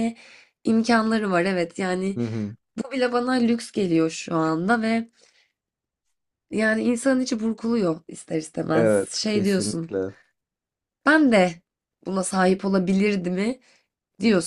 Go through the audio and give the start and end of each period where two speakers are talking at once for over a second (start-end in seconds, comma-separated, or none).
8.7-9.9